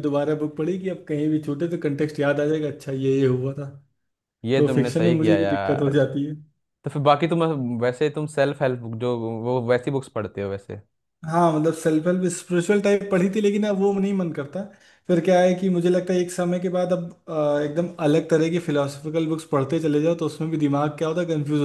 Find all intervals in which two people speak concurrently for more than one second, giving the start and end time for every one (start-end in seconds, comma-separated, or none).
4.5-5.9